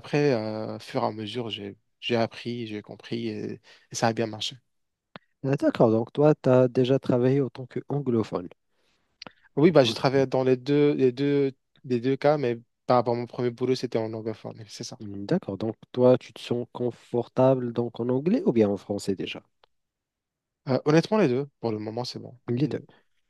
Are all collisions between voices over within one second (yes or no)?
yes